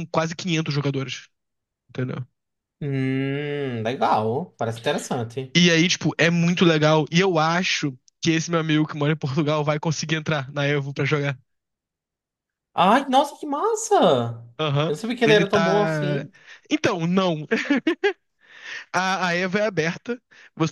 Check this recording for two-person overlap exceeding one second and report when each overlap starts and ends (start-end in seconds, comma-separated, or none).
14.9-16.3